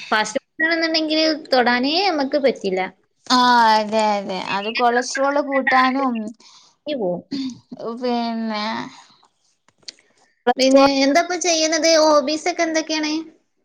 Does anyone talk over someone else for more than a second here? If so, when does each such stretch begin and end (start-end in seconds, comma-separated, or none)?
none